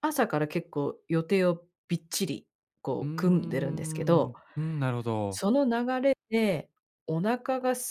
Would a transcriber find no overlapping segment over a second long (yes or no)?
no